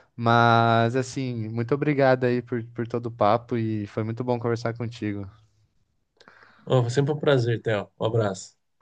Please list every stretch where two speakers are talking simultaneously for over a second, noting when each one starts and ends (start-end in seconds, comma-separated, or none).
none